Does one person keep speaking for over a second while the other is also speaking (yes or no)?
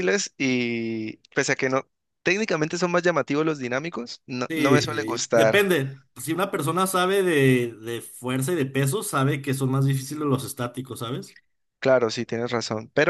yes